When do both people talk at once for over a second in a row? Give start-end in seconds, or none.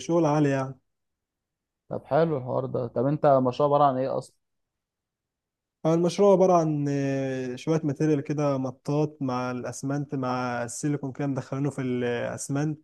none